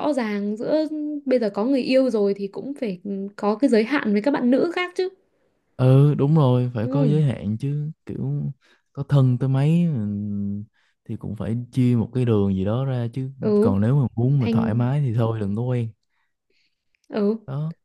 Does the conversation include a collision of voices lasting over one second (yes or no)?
no